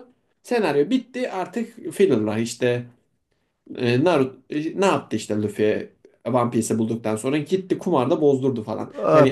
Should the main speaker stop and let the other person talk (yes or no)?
yes